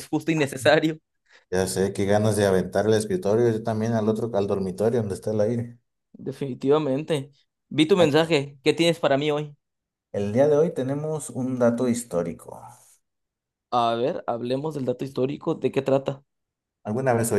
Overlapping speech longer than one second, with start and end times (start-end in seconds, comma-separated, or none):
none